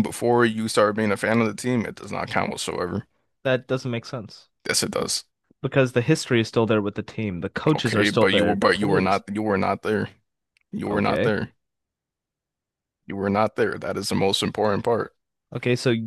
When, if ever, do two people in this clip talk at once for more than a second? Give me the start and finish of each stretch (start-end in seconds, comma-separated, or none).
7.8-9.2